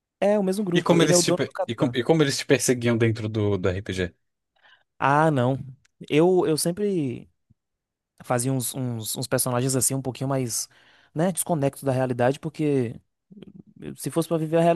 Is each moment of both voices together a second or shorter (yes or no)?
no